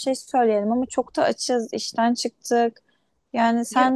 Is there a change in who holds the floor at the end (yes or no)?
no